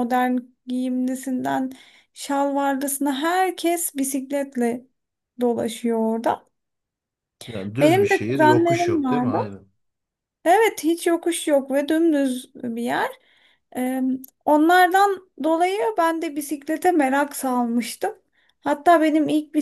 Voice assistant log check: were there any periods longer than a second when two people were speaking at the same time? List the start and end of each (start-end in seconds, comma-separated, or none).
7.8-9.5